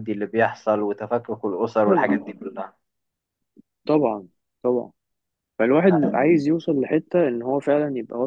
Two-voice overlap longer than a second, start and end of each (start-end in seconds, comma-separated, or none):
none